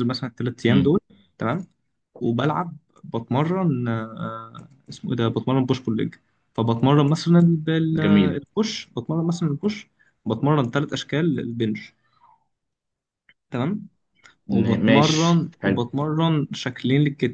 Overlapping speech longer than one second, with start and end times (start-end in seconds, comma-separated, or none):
14.5-15.9